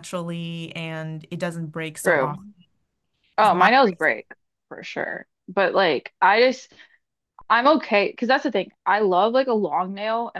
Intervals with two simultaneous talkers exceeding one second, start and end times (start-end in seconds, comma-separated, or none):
none